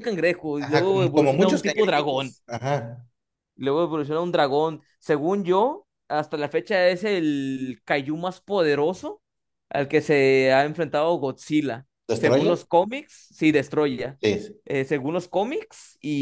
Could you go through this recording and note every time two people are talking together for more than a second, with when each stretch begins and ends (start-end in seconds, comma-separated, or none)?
0.6-2.4